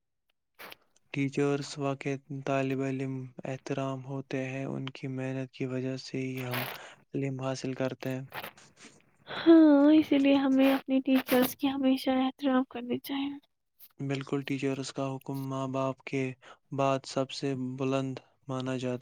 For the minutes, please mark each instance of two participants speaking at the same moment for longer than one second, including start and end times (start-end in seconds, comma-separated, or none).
none